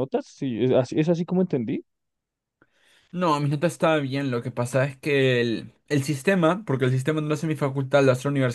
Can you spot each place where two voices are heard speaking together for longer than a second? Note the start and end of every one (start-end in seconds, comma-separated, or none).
none